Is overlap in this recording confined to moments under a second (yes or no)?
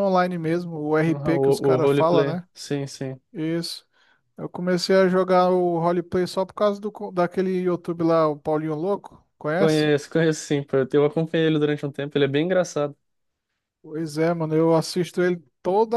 no